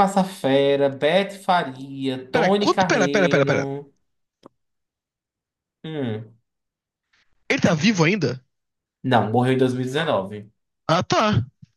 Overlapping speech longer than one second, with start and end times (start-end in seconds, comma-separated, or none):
2.3-3.6